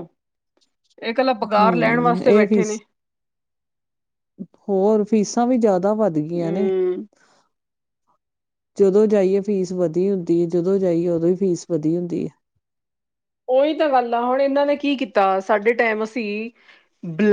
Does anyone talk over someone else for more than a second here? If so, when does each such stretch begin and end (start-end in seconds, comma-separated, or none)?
1.6-2.8